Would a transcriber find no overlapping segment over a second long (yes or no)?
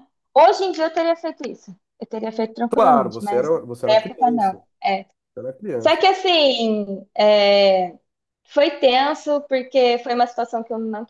no